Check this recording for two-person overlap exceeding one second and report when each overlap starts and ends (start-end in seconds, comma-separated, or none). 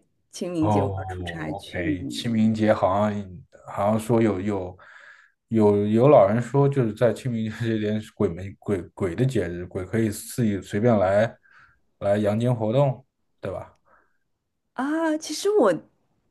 0.6-2.0